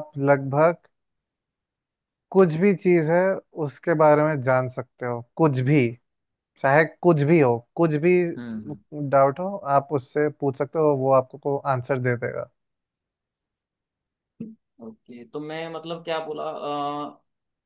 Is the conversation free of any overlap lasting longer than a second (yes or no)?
yes